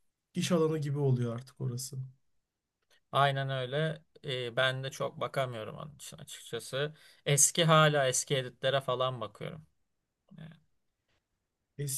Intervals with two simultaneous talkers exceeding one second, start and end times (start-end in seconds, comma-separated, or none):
none